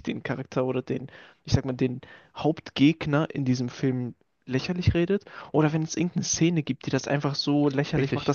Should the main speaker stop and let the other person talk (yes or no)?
no